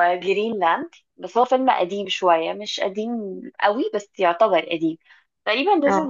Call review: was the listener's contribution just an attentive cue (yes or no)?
yes